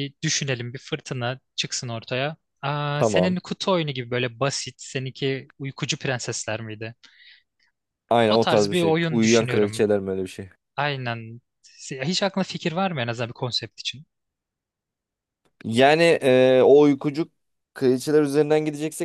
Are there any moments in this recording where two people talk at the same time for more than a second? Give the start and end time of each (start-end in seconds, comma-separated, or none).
8.3-9.9